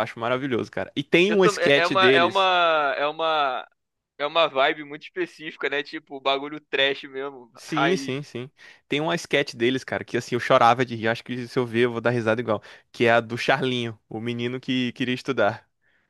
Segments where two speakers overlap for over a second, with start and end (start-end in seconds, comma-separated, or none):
1.3-2.5